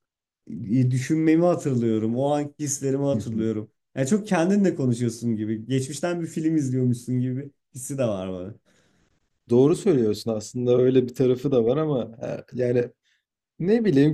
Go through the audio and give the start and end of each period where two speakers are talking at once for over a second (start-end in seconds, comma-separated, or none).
none